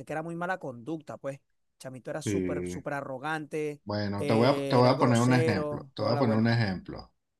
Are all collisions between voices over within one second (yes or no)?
no